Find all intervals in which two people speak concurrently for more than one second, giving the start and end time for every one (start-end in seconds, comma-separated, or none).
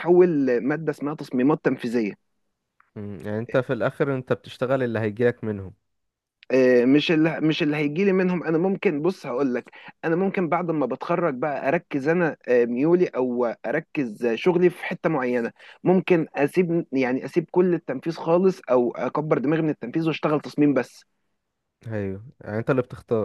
none